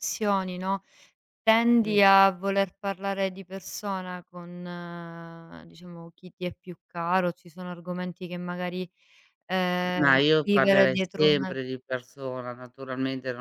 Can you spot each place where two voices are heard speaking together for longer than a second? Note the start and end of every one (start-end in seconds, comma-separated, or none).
10.0-11.5